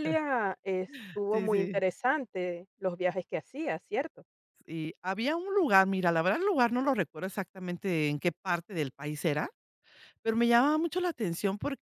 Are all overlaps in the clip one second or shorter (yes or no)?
yes